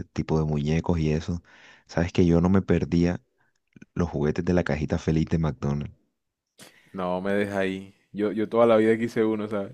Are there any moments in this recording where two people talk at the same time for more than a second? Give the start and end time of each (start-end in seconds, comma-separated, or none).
none